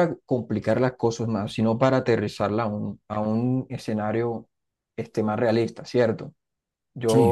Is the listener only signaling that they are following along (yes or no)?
yes